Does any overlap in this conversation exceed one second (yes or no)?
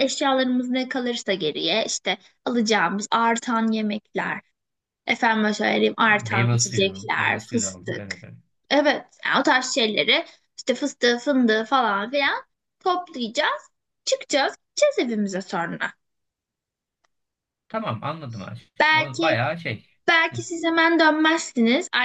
yes